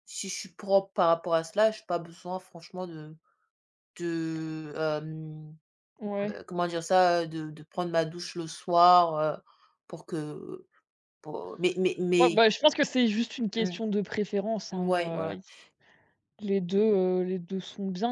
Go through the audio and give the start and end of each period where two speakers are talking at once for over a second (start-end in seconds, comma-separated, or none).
none